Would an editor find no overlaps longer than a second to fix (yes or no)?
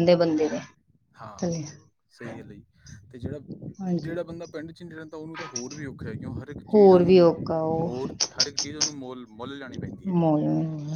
yes